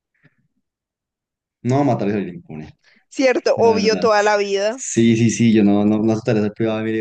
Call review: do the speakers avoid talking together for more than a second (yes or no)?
yes